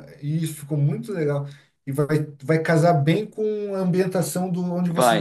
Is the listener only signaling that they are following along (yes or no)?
yes